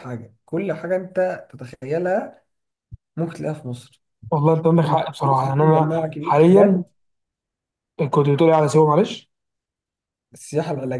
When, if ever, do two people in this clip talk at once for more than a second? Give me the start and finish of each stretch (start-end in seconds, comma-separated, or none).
4.8-6.8